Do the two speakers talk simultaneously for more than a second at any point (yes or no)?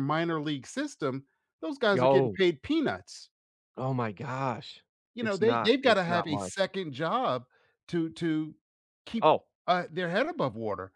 yes